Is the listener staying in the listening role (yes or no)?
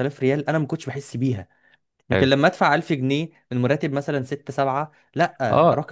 no